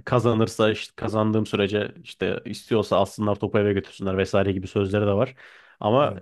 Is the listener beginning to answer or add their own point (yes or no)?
no